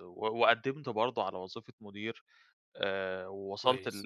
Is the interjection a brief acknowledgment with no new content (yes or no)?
yes